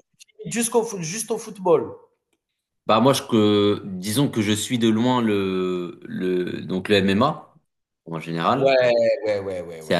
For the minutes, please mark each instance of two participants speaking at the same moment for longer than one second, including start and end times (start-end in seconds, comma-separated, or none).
none